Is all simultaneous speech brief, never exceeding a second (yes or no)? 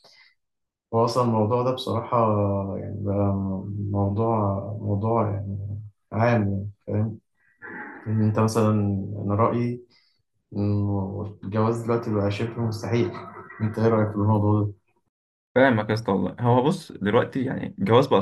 yes